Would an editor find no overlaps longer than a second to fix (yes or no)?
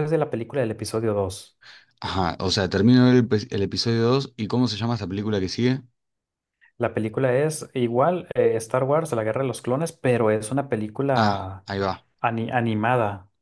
yes